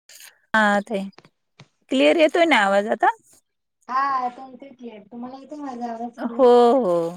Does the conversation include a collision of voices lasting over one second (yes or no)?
no